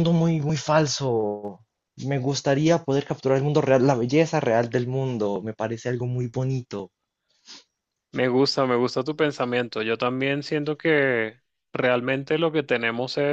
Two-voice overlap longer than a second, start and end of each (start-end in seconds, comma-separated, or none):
none